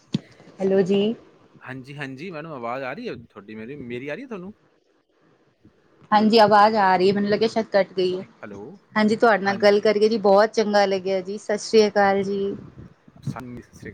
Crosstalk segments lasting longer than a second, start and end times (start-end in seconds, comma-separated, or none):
none